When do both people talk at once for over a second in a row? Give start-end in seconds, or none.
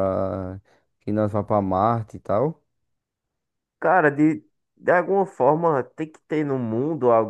none